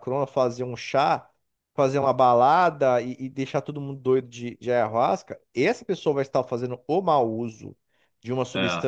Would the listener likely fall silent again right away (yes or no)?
yes